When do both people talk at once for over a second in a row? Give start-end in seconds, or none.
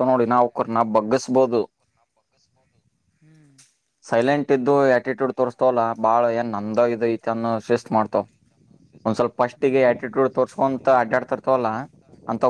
9.6-11.2